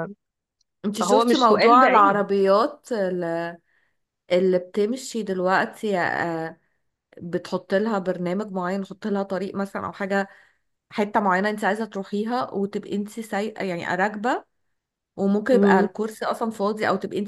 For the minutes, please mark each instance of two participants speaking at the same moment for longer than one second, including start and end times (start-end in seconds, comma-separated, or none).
1.0-2.2